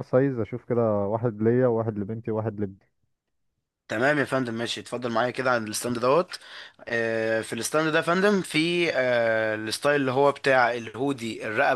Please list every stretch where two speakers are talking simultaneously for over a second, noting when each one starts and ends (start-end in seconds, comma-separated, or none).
none